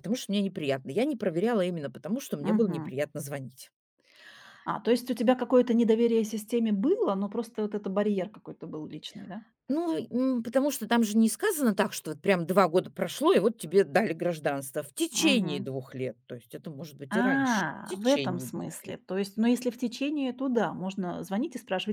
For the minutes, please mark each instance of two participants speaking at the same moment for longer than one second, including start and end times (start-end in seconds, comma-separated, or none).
17.1-18.9